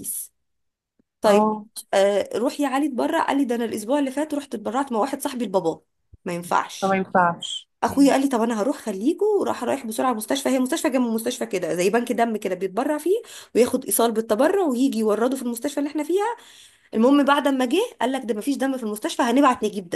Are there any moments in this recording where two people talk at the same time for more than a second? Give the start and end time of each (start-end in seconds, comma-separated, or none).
none